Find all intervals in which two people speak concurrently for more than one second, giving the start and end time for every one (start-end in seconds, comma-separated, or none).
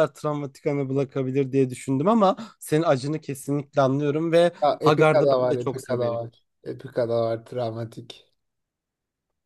4.6-6.2